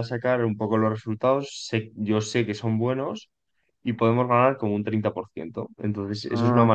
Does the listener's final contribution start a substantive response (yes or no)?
no